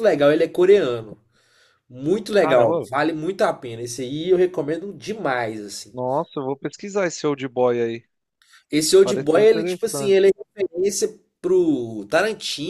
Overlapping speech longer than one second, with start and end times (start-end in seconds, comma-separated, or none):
9.0-10.3